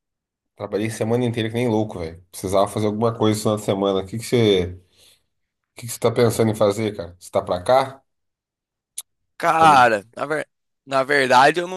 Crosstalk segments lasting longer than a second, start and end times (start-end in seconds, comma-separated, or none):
none